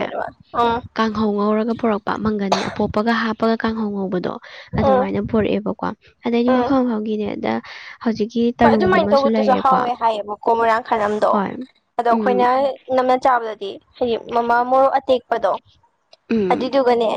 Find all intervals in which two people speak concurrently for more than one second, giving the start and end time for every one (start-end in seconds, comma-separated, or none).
none